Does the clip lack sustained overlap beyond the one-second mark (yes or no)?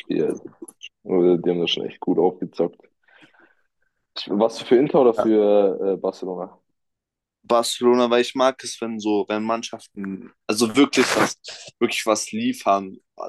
yes